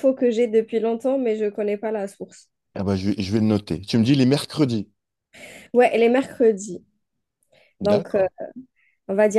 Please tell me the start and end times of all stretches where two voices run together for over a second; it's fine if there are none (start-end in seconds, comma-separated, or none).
none